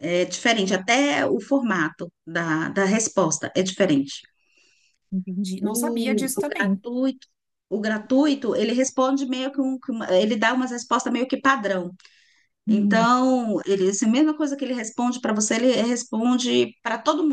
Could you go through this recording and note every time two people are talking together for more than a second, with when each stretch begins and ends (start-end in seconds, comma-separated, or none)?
5.6-6.8